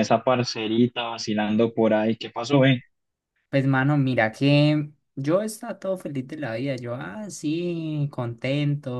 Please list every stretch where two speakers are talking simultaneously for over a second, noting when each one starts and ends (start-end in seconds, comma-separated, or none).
none